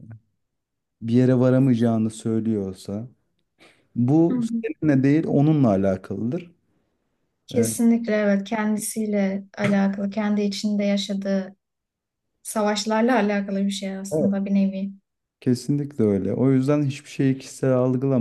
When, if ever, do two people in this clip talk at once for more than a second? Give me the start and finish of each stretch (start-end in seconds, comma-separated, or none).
none